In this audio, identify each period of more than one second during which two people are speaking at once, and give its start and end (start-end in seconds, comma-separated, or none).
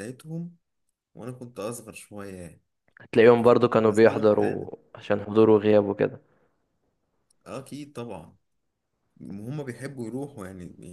3.5-4.7